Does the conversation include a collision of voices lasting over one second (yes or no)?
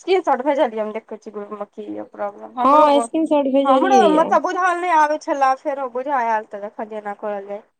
yes